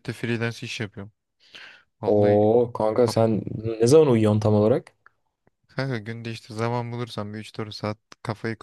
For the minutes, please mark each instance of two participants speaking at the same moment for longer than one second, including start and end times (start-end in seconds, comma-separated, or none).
none